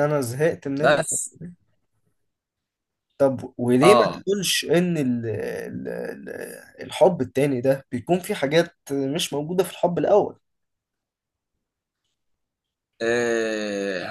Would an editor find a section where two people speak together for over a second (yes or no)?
no